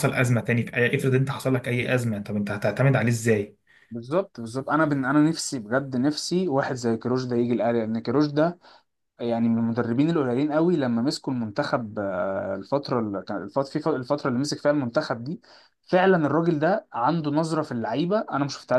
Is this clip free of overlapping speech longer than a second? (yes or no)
yes